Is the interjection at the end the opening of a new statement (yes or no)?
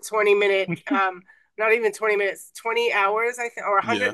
no